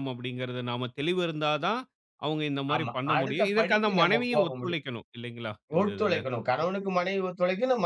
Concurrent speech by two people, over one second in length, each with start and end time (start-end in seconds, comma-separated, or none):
2.7-4.8